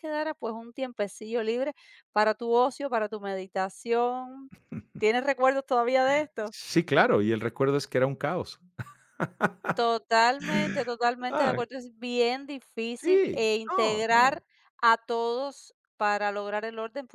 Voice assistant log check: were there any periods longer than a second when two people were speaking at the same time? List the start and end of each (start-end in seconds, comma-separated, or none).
13.0-14.4